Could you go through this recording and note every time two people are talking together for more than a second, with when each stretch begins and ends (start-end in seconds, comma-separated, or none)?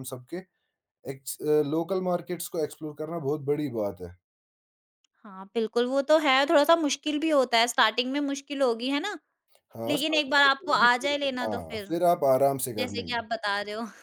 9.9-11.9